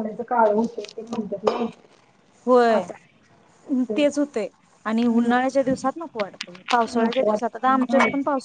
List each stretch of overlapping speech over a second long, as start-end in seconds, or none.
none